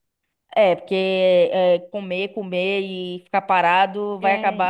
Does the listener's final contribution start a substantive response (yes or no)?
yes